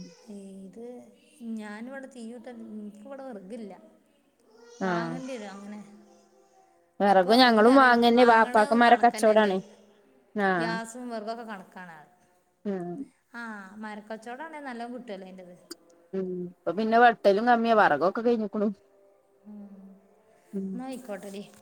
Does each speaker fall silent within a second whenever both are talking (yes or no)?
no